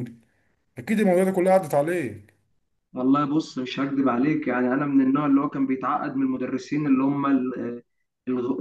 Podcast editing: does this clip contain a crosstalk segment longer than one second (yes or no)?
no